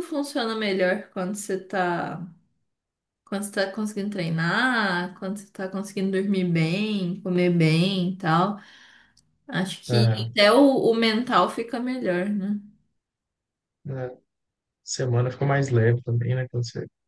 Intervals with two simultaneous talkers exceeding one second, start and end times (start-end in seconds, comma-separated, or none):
none